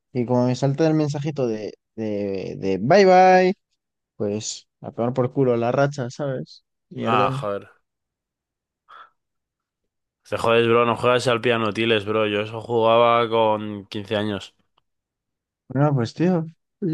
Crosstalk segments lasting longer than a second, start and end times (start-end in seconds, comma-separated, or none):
none